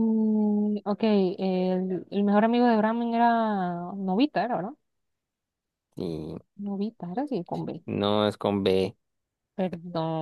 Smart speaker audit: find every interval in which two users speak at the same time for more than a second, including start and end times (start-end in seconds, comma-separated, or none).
none